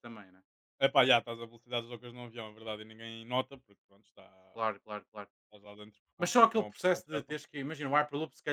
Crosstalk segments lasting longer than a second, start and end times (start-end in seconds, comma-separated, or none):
6.2-7.4